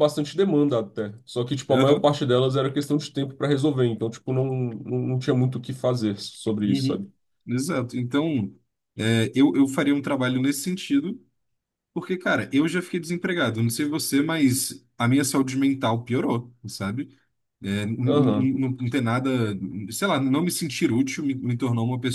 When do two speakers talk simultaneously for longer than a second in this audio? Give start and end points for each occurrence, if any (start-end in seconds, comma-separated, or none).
none